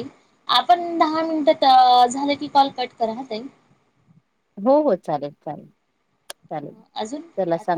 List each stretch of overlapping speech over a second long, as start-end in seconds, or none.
none